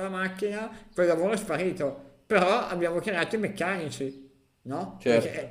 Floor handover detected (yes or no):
yes